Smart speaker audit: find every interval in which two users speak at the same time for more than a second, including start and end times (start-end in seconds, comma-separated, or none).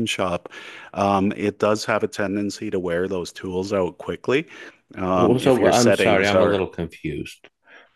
5.1-6.6